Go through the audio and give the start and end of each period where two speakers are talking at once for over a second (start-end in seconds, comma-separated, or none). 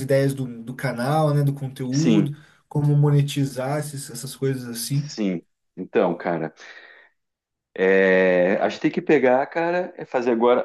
none